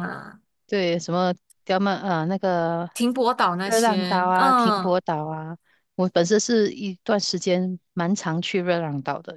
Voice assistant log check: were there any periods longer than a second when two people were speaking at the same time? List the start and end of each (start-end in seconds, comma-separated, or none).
3.6-5.0